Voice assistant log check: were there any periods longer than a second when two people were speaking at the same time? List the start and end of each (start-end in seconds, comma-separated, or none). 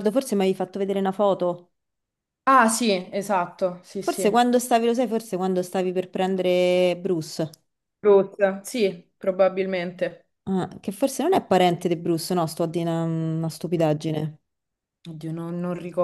none